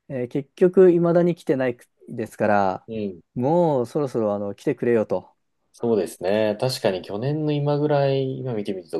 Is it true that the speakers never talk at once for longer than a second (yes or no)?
yes